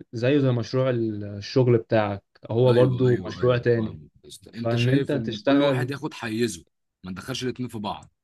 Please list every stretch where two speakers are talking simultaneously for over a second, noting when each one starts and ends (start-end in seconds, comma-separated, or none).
2.7-4.0, 4.6-5.9